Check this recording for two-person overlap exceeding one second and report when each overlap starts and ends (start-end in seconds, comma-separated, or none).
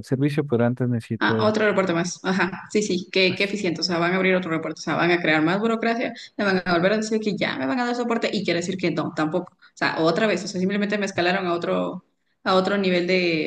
none